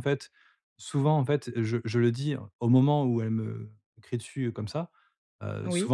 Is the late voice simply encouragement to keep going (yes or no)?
yes